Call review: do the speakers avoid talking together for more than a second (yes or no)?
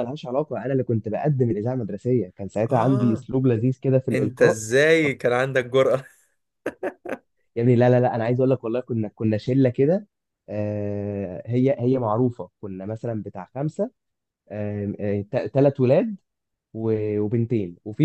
yes